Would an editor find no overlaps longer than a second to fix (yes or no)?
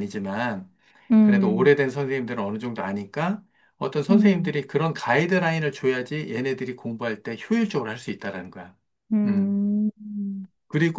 yes